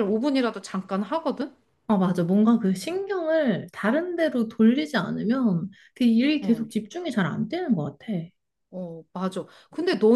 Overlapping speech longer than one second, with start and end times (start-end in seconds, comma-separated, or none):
none